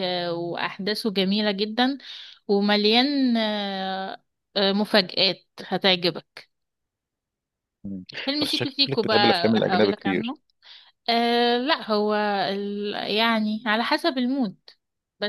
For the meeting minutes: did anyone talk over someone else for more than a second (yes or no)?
yes